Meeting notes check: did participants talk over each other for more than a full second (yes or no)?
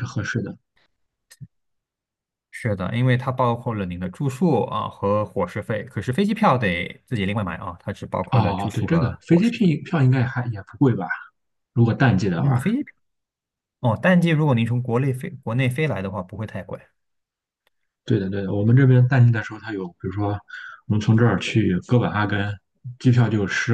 yes